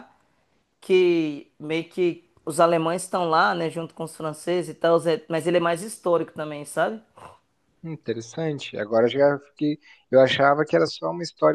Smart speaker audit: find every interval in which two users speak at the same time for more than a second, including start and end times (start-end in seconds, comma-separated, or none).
none